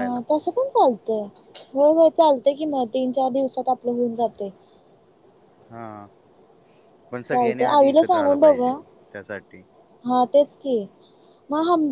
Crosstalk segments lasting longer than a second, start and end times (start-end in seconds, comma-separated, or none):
7.3-8.7